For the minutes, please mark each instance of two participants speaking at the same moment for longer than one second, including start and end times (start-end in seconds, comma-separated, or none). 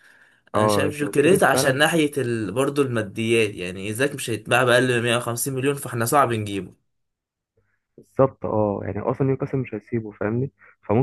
0.6-1.8